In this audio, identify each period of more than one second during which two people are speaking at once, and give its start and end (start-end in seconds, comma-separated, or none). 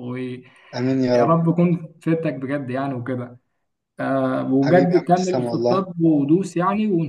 4.6-5.8